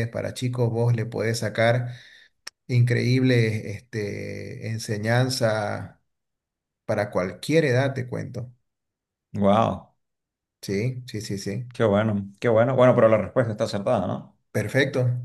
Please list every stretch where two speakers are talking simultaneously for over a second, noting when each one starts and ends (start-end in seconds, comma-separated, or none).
none